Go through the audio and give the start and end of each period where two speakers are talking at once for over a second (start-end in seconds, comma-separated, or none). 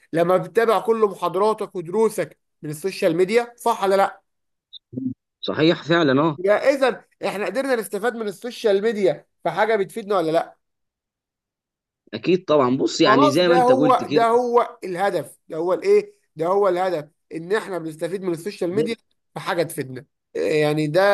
13.0-14.3